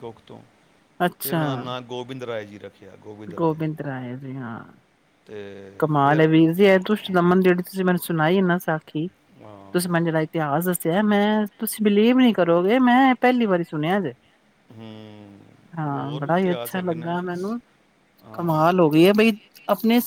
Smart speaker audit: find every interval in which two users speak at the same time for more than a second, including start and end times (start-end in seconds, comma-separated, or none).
15.9-17.1